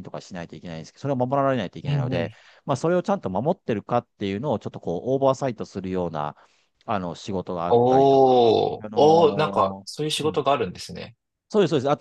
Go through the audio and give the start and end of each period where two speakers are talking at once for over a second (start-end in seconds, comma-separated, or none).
7.7-10.4